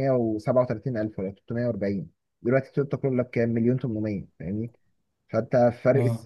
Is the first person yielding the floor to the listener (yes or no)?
no